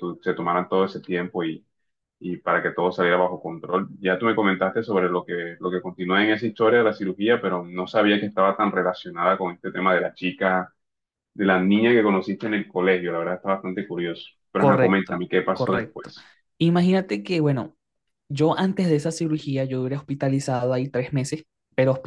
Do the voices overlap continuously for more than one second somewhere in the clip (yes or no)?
yes